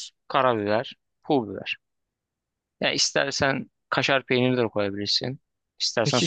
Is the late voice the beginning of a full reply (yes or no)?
yes